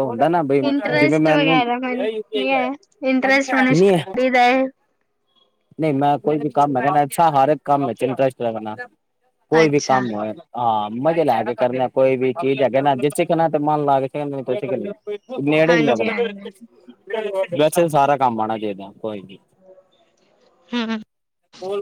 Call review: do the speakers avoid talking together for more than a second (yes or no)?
yes